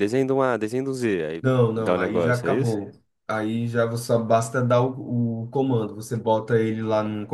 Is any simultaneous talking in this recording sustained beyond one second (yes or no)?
yes